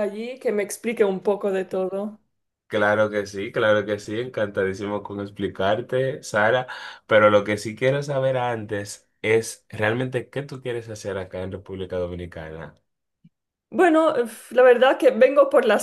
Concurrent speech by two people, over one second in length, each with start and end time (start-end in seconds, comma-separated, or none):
none